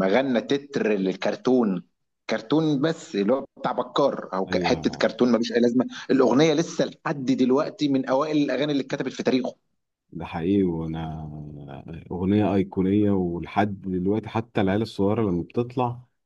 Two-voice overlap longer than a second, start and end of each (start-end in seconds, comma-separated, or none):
none